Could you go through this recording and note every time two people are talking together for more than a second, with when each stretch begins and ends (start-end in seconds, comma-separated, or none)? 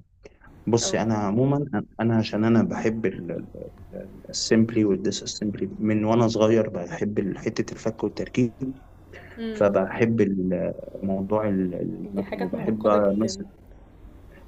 12.0-13.4